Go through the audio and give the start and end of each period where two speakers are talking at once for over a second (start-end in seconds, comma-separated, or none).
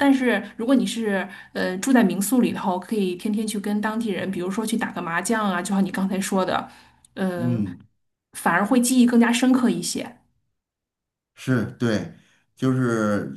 none